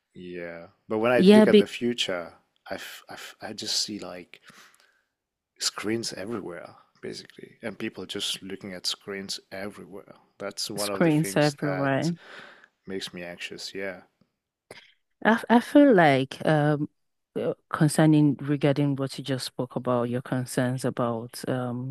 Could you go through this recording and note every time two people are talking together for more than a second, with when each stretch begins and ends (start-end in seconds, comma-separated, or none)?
10.8-12.1